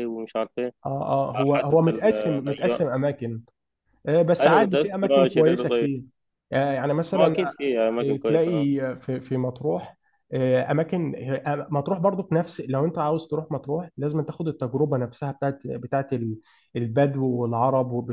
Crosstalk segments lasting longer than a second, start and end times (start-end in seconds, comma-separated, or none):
1.3-2.9, 4.4-5.9